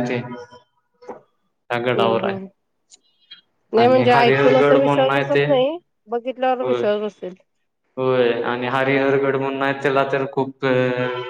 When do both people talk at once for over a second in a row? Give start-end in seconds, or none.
3.8-5.5